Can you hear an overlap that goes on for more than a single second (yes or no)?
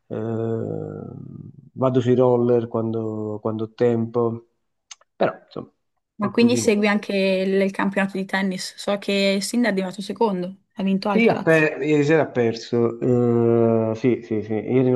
no